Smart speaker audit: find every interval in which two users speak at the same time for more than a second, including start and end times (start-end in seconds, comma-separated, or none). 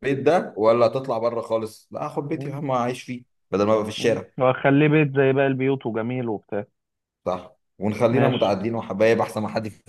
none